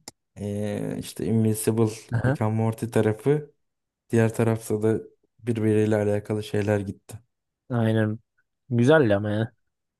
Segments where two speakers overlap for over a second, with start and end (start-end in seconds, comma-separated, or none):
none